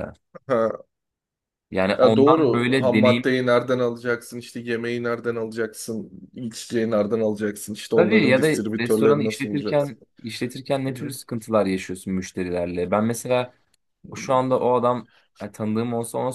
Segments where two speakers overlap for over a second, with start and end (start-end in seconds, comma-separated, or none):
2.0-3.3, 7.9-10.0